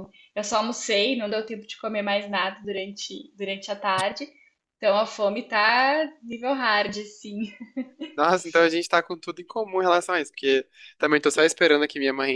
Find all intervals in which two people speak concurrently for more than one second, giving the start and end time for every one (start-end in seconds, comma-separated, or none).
none